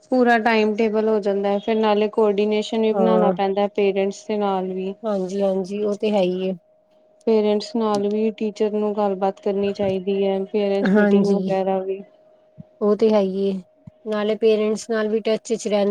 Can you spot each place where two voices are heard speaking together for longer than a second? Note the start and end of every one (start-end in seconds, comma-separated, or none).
none